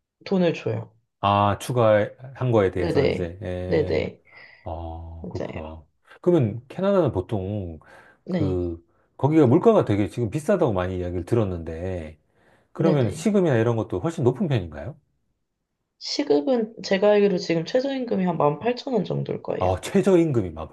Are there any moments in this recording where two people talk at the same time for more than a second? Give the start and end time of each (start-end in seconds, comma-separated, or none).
2.7-4.1